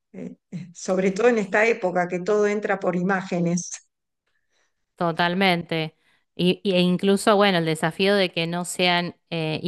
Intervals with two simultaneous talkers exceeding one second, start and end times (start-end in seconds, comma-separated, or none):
none